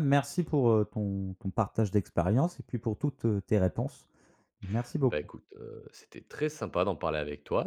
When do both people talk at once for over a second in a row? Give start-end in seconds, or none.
none